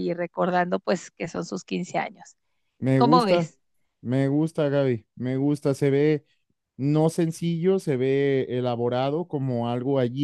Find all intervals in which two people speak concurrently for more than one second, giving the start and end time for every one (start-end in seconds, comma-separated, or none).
none